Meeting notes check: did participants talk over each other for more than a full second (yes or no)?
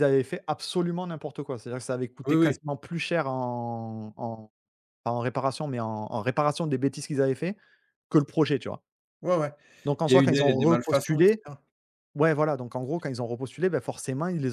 yes